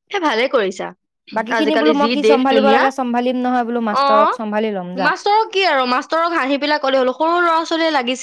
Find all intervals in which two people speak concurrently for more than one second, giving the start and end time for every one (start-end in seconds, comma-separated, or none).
1.6-4.0